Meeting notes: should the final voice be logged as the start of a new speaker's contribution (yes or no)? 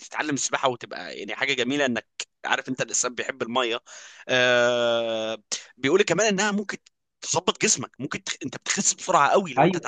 yes